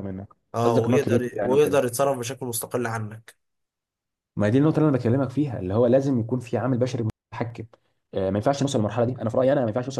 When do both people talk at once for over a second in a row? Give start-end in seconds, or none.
0.6-1.8